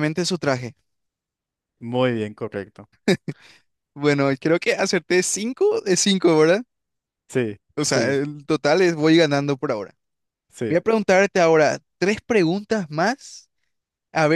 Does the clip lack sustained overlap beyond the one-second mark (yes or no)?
yes